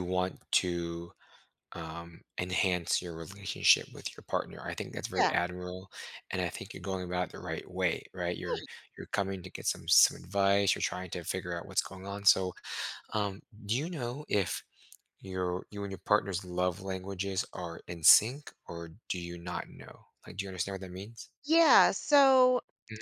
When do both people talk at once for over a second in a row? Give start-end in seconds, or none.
none